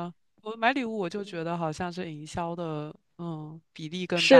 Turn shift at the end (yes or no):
yes